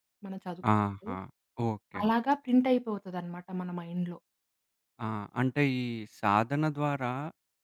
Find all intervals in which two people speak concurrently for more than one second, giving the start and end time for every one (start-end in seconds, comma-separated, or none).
none